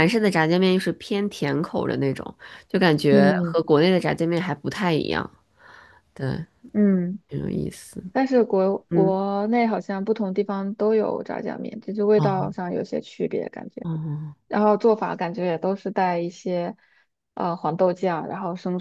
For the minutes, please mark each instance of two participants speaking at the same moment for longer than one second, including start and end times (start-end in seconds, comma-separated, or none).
none